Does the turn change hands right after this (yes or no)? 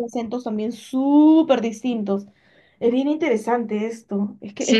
yes